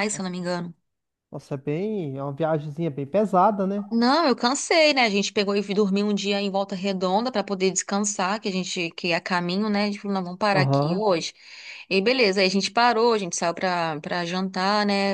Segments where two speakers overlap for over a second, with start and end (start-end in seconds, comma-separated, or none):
none